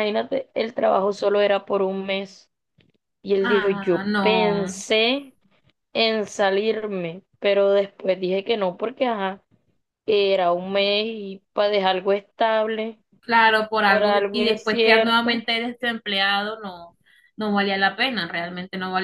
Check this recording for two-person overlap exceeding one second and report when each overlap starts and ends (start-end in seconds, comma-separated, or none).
3.4-4.7, 13.8-15.4